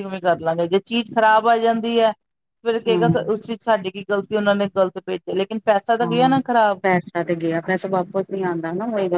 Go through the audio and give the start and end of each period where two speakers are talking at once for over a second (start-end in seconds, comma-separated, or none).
none